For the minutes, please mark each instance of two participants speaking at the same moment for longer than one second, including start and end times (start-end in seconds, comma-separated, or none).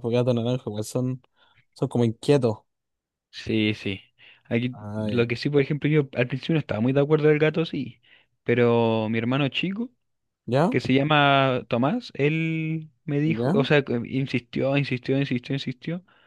none